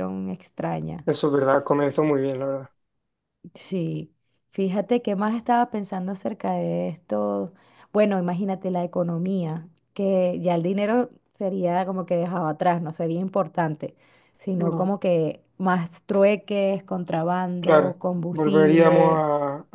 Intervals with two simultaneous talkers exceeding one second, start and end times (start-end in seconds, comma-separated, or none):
17.6-19.2